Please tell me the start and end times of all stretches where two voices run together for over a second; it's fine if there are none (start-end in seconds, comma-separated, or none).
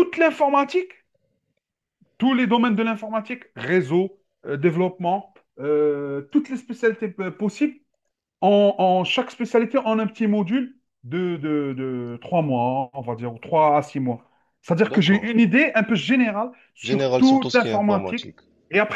16.8-18.2